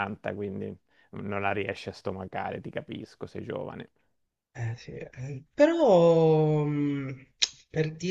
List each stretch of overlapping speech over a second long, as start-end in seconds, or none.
none